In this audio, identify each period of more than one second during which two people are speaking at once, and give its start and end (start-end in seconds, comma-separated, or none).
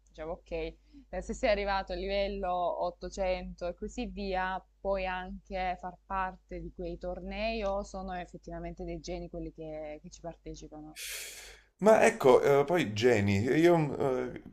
none